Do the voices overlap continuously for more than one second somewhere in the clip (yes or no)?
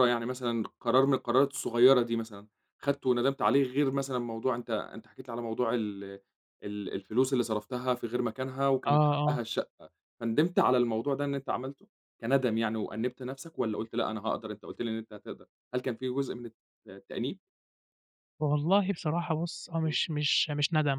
no